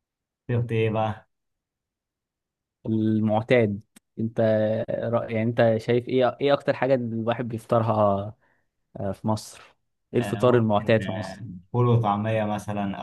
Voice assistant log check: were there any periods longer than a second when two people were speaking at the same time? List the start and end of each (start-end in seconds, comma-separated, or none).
10.2-11.4